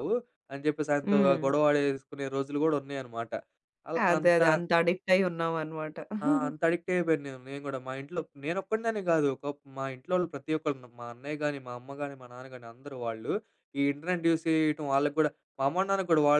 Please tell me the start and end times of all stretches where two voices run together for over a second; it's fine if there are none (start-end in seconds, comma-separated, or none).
none